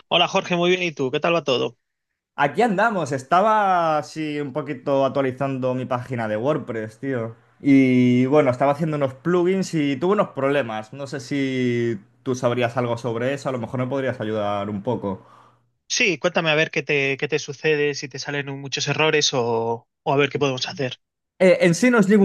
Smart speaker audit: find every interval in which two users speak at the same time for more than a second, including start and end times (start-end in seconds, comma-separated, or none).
none